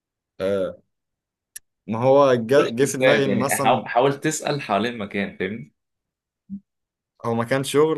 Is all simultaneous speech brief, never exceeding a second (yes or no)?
no